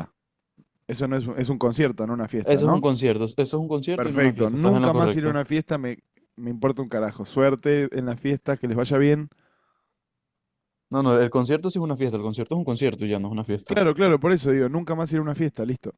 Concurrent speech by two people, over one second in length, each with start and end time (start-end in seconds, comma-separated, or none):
3.9-5.4